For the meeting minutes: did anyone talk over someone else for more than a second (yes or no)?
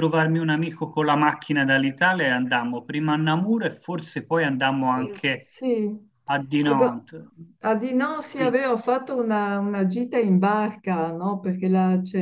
no